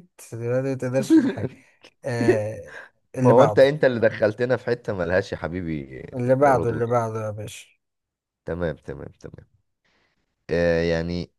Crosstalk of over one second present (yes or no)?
no